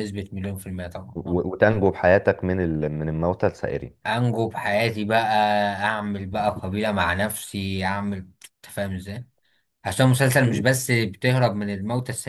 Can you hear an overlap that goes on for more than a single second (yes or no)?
no